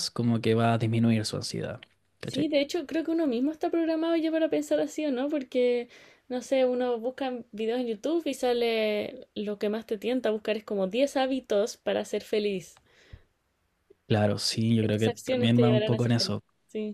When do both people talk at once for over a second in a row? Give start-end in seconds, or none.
14.8-16.4